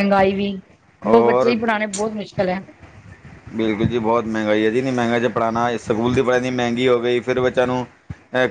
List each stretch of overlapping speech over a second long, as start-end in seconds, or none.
none